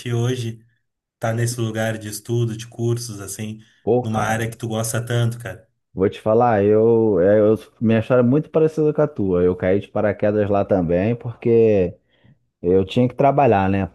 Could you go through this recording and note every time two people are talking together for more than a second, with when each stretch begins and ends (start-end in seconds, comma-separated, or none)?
none